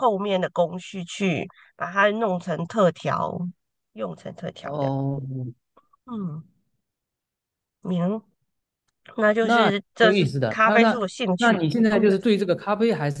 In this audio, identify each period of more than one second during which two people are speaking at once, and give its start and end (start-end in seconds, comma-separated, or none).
9.4-12.0